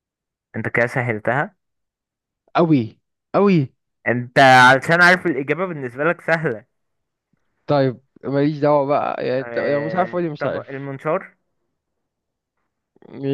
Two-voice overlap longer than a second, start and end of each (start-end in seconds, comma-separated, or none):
9.4-10.9